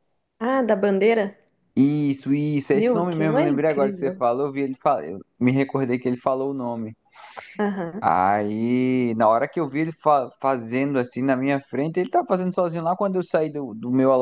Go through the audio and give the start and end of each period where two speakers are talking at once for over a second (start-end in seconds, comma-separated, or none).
2.7-4.2